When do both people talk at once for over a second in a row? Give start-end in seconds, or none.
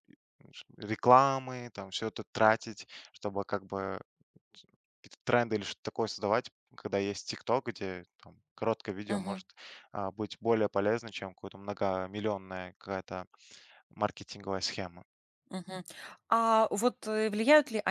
none